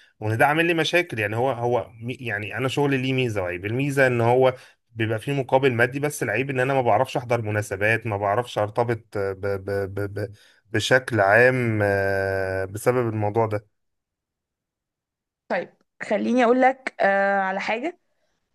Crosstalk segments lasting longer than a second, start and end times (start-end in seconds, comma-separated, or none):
none